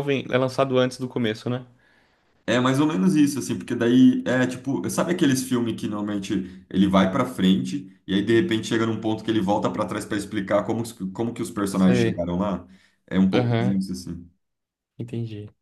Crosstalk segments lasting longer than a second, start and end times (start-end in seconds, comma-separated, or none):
none